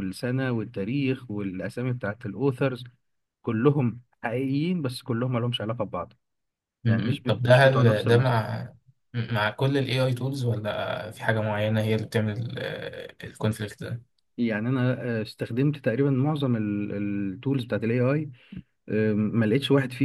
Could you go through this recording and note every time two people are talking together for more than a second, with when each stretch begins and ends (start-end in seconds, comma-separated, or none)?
6.9-8.5